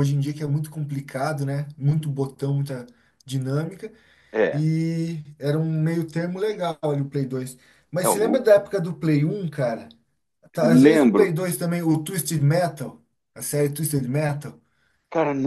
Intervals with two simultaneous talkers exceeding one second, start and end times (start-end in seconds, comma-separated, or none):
none